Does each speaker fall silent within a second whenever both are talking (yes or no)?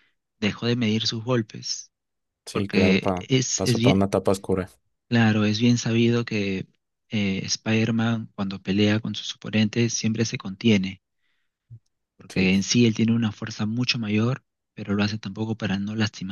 no